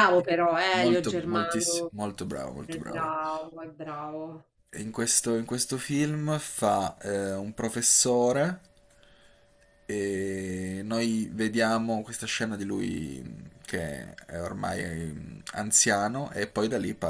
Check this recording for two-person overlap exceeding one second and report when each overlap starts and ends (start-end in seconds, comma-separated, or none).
0.7-1.9